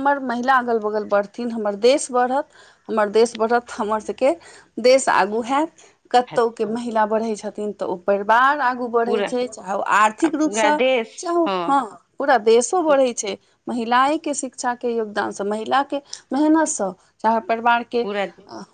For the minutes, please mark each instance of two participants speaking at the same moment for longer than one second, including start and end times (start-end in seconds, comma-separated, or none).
none